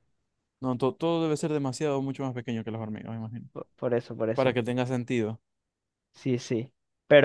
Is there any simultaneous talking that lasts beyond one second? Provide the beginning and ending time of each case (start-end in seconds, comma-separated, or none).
none